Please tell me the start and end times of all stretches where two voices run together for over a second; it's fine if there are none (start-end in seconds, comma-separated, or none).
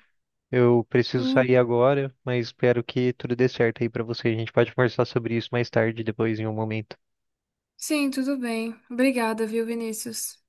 none